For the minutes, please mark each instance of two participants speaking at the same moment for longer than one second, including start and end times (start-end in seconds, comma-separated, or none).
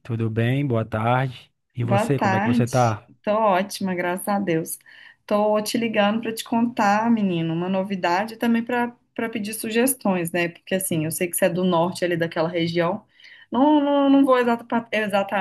1.8-3.1